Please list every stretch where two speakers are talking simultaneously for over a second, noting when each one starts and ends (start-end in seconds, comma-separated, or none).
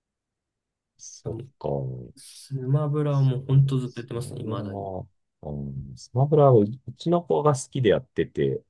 3.1-4.9